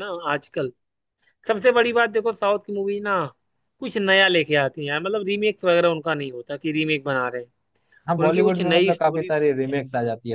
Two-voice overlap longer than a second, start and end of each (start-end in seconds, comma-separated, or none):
8.2-9.7